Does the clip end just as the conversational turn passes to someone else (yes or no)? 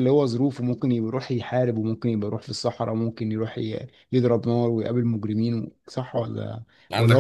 no